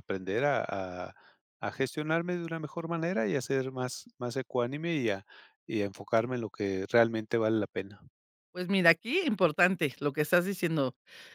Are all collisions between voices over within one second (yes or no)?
yes